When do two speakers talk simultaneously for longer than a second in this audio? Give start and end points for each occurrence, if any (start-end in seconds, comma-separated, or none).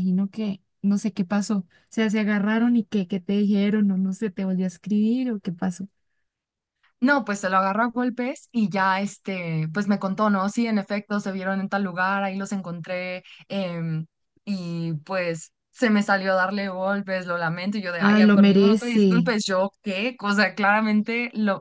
18.0-19.3